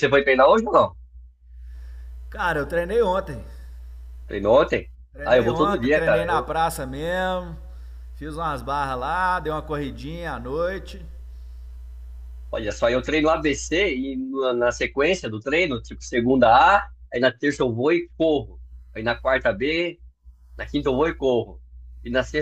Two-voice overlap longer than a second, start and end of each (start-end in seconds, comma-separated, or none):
5.2-6.5